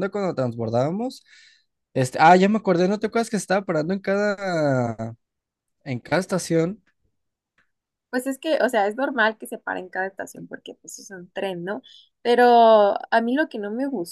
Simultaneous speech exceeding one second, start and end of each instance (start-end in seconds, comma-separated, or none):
none